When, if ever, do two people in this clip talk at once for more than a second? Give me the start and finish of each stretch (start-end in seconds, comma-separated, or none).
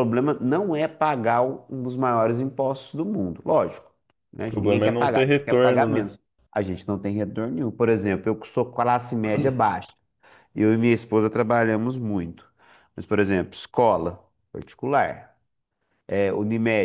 4.4-6.1